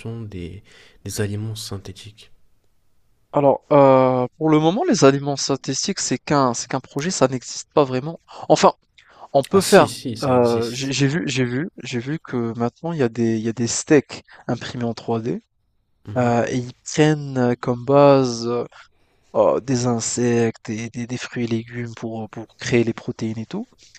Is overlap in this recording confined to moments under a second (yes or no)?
no